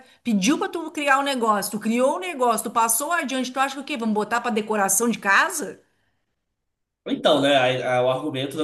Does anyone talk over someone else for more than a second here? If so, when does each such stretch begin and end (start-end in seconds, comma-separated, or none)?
none